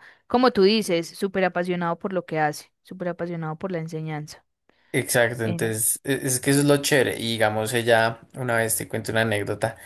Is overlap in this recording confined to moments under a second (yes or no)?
yes